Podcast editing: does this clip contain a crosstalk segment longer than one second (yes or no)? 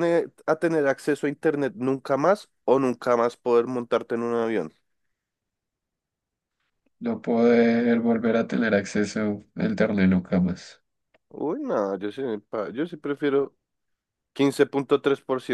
no